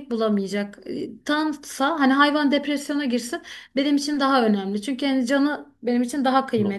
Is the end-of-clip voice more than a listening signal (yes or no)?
no